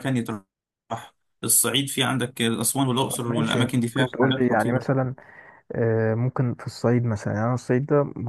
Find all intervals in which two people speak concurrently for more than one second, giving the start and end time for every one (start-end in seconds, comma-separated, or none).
3.1-4.9